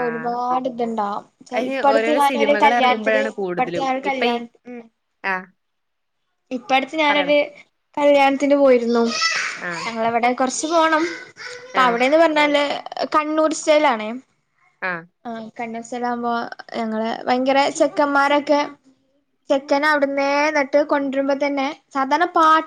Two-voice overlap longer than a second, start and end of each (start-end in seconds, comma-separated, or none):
1.6-3.3